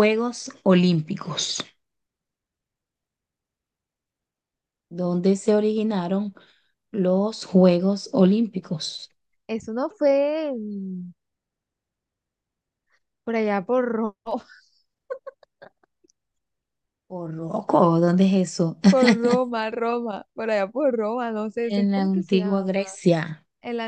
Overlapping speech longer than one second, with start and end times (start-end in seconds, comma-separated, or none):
21.6-22.8